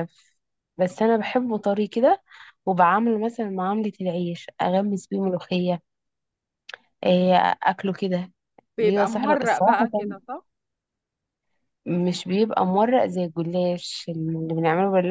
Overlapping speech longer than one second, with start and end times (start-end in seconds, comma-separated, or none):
8.8-10.2